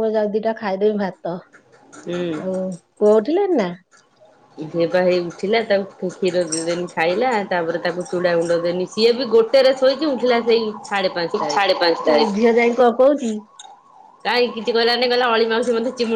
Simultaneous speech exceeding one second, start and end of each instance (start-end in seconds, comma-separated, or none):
none